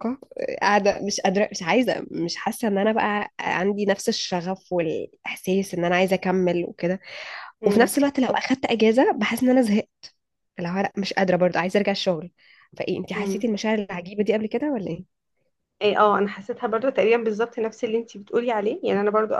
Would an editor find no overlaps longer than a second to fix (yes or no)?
yes